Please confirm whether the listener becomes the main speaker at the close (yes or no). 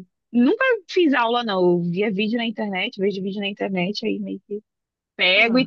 no